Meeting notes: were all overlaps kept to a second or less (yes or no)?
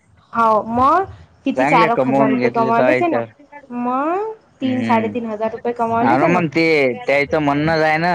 no